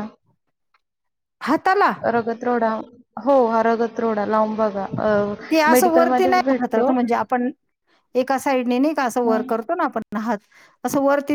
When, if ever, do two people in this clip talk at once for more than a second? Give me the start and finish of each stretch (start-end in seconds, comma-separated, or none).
5.7-6.9